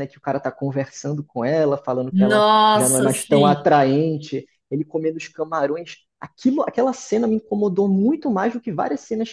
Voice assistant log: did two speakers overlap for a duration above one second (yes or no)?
yes